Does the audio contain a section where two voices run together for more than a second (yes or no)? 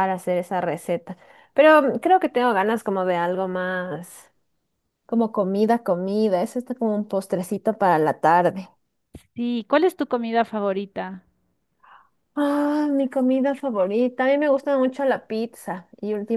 no